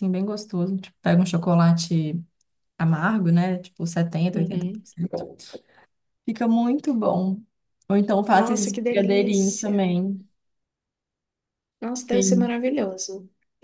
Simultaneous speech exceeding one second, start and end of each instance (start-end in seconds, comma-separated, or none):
8.3-9.8